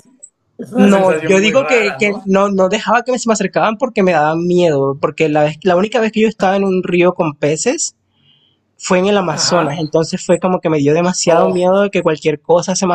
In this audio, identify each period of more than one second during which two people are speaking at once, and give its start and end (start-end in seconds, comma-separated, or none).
0.8-2.2